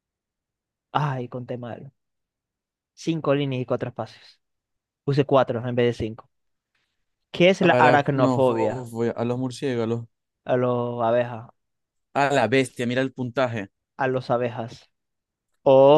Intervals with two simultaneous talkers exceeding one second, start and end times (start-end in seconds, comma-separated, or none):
7.6-8.9